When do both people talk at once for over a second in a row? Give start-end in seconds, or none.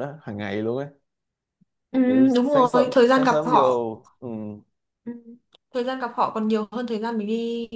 2.4-3.9